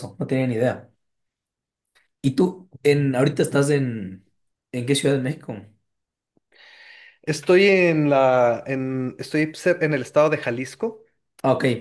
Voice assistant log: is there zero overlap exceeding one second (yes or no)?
yes